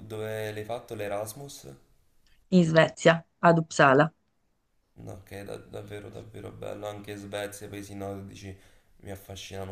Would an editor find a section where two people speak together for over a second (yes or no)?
no